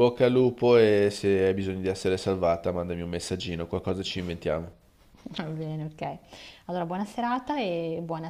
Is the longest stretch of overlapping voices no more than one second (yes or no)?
yes